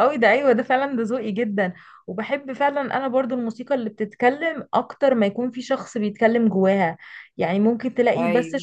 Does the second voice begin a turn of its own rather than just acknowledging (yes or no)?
no